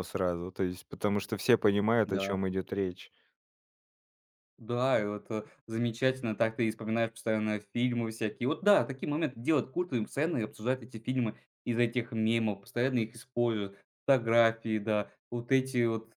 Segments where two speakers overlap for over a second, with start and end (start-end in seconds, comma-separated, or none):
none